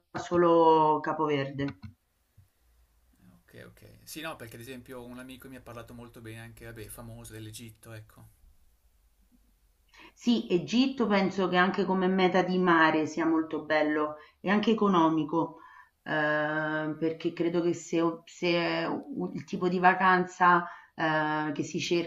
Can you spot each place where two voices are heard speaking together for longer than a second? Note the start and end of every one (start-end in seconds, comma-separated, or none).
none